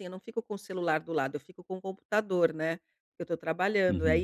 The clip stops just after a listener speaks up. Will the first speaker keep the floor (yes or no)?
yes